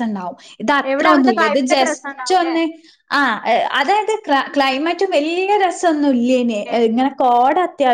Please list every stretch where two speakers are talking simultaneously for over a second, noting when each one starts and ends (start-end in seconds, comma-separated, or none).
0.9-2.5